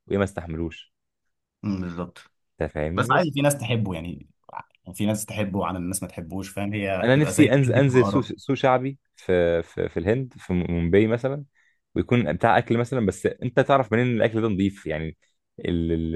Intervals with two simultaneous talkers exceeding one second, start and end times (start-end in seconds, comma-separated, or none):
7.0-8.3